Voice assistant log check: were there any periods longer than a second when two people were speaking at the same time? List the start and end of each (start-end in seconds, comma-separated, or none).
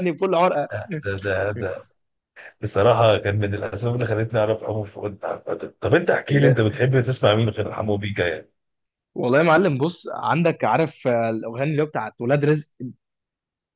none